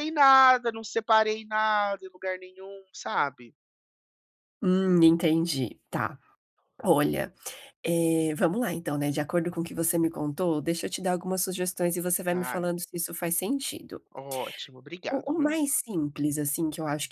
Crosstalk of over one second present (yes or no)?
no